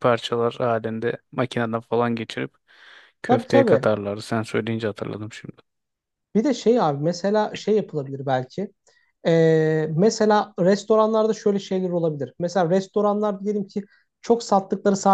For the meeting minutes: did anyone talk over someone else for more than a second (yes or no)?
no